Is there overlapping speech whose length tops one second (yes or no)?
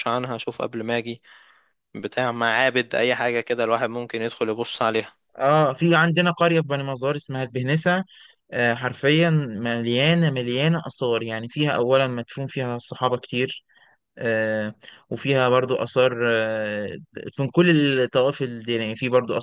no